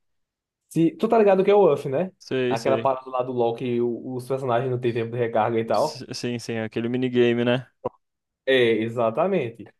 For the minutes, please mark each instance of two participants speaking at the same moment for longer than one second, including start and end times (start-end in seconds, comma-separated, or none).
none